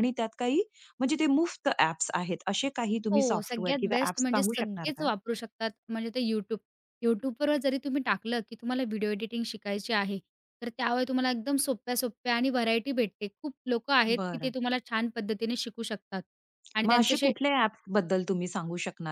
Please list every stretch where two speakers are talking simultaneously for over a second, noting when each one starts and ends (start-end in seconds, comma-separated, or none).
3.1-5.1